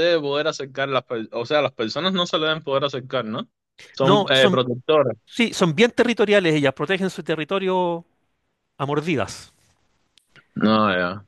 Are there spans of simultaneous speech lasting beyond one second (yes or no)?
no